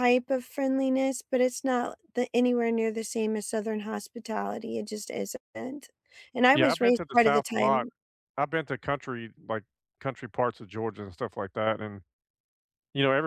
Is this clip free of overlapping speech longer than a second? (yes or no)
no